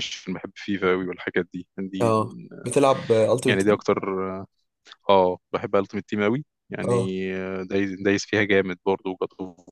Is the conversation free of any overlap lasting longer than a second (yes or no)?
yes